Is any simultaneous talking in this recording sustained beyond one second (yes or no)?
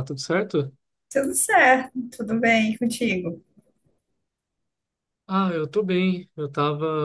no